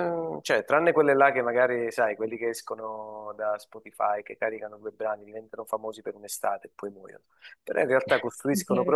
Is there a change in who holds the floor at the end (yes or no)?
no